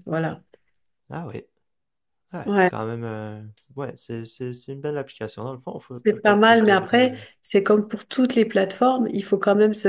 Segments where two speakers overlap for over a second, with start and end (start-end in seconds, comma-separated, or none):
5.9-7.2